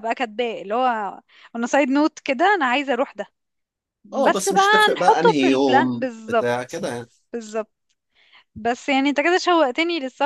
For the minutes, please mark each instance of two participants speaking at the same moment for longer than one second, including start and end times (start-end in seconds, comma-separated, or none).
4.2-6.5